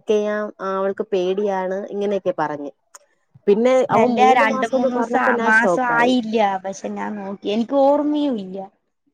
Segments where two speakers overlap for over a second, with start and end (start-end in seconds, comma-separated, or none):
4.0-6.1